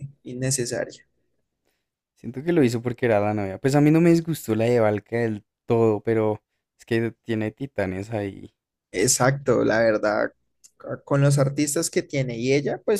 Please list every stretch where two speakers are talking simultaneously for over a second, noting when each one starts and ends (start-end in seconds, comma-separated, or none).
none